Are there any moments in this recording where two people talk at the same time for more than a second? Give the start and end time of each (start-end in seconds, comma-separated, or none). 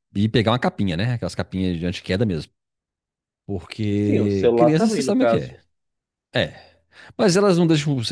4.0-5.6